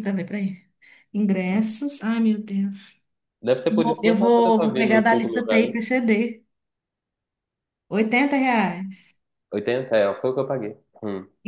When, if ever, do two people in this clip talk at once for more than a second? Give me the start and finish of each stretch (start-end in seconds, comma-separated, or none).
3.7-5.9